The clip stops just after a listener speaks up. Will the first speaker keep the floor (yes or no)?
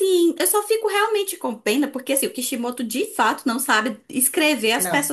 yes